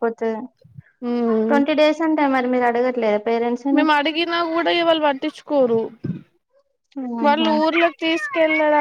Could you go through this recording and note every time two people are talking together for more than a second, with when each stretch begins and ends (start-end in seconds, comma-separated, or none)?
none